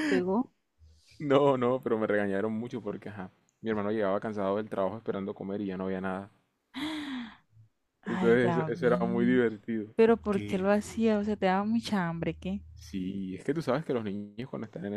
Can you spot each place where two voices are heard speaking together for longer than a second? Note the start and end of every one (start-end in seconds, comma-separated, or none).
8.1-9.4